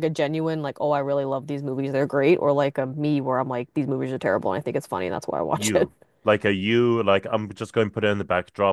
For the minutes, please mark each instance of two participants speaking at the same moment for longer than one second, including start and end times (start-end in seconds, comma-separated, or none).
none